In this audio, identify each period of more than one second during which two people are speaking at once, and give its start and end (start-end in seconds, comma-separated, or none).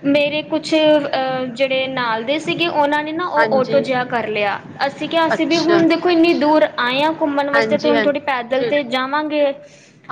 7.5-8.9